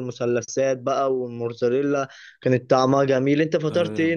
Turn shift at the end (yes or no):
yes